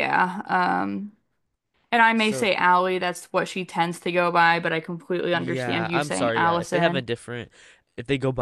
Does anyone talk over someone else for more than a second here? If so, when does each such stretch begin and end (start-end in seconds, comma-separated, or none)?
5.3-7.0